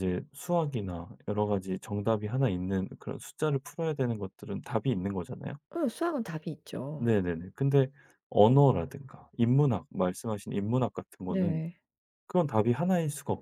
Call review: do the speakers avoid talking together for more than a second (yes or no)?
yes